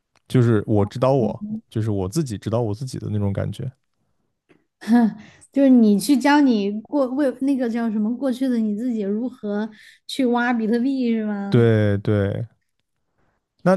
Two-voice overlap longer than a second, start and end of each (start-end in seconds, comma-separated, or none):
none